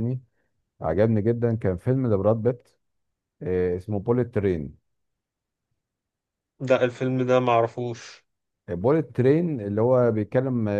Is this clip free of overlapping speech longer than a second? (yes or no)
yes